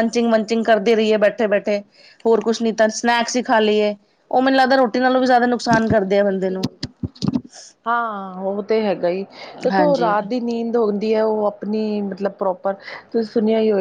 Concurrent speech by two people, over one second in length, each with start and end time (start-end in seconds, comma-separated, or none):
none